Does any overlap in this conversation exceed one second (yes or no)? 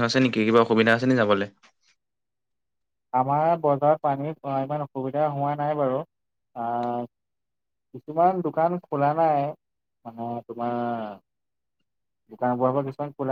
no